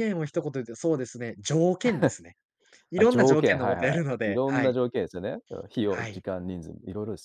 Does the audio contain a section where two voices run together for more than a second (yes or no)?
yes